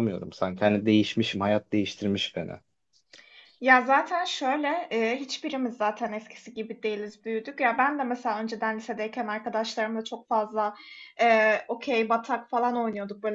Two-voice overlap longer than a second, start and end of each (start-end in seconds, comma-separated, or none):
none